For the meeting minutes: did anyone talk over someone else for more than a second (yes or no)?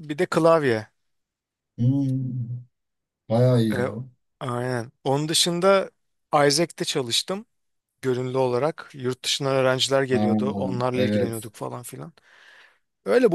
yes